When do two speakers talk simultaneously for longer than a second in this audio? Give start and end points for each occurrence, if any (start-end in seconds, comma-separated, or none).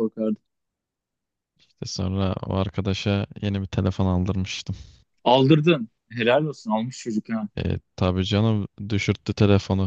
none